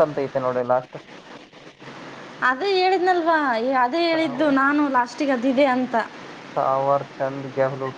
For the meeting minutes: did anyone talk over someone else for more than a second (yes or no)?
no